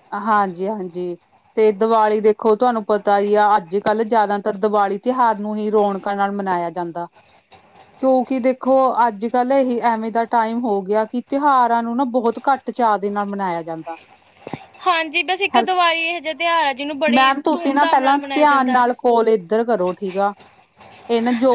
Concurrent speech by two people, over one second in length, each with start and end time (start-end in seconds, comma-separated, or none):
17.1-18.8